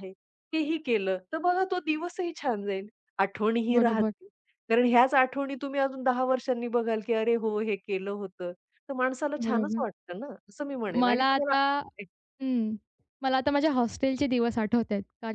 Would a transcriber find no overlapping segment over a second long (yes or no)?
yes